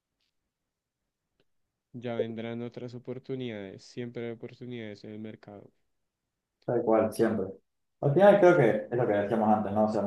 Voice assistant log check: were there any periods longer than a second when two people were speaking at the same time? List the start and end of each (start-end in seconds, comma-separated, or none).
none